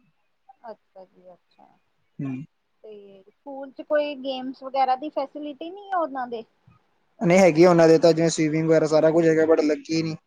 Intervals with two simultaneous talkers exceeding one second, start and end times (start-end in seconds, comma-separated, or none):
none